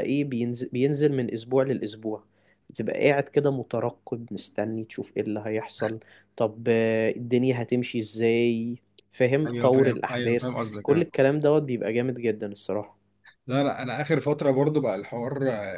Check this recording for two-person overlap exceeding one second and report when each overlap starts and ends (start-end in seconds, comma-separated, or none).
9.5-11.1